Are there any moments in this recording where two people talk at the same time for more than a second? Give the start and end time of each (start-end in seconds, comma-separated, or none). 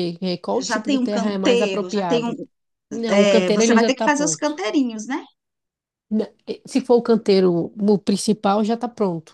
0.6-2.3, 3.1-4.6